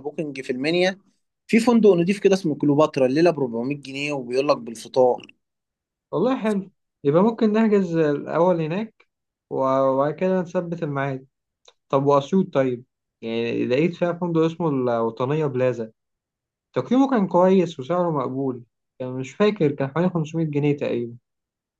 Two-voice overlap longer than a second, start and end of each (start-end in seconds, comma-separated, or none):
none